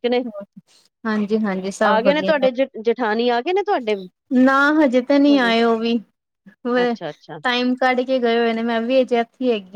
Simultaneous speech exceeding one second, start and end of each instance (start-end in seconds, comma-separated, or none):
none